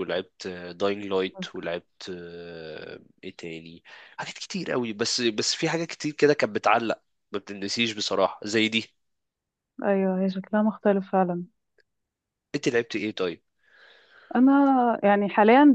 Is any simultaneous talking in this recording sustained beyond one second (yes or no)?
no